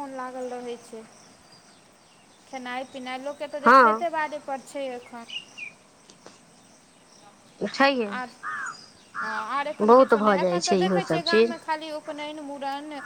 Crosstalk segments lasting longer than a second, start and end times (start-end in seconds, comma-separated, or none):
9.8-11.5